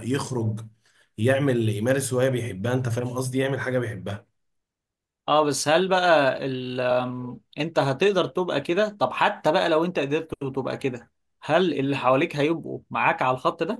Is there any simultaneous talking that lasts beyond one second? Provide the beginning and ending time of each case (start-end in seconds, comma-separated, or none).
none